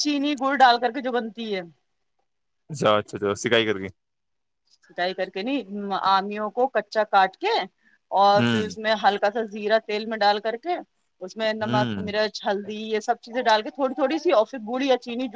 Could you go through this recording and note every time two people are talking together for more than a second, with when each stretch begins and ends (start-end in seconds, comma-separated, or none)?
none